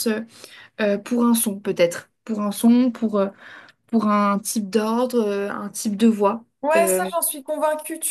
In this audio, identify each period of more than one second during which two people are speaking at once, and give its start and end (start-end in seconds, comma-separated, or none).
none